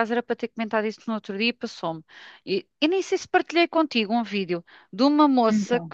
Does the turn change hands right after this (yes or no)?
no